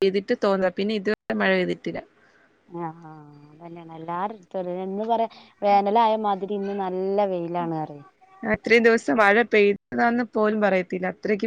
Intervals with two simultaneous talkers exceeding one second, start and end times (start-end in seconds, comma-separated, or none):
none